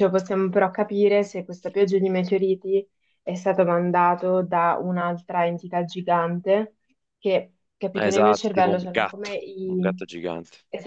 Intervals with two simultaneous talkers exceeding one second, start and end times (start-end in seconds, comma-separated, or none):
7.9-10.1